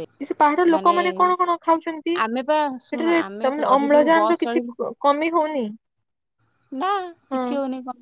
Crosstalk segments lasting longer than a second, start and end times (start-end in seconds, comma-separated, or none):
2.2-4.6